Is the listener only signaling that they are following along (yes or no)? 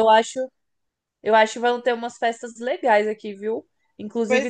yes